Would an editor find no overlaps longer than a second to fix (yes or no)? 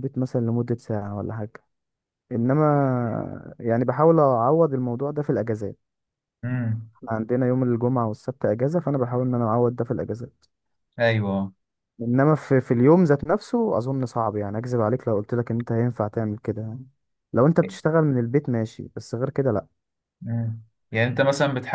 yes